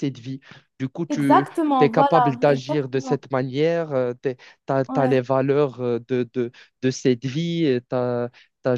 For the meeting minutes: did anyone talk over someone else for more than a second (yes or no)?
yes